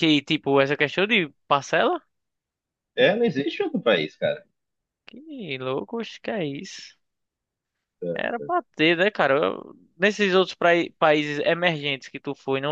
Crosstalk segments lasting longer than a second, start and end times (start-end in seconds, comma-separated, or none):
none